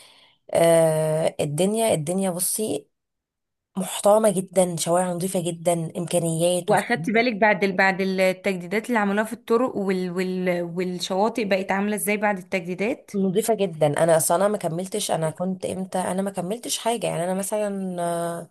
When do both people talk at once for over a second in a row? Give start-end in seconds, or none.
none